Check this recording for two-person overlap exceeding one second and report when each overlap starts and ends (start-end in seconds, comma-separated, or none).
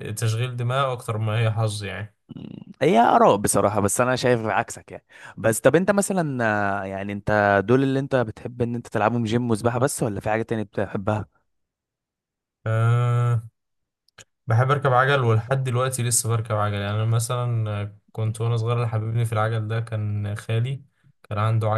none